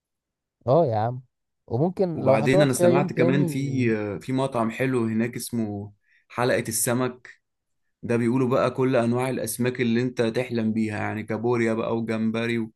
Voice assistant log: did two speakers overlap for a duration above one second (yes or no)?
yes